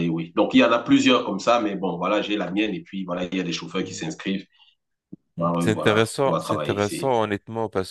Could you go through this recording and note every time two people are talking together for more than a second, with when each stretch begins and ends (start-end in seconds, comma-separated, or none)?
5.4-7.1